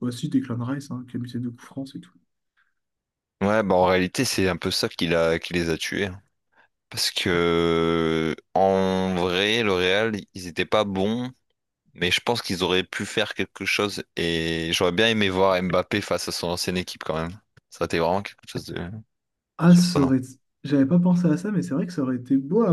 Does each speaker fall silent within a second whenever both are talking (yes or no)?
yes